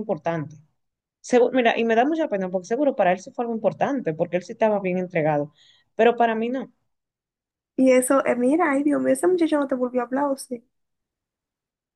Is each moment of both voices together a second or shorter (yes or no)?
yes